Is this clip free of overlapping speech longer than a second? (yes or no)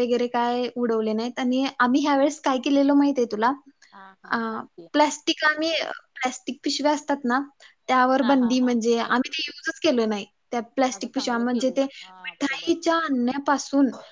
no